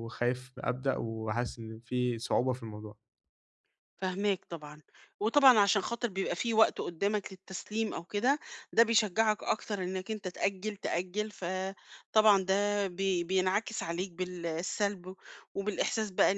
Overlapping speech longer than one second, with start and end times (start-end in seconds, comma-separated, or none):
none